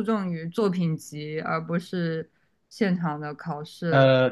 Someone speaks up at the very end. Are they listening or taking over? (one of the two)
taking over